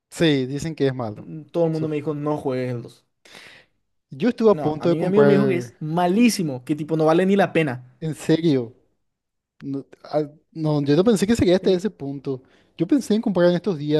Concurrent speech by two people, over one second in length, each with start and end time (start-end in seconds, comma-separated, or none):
4.5-5.7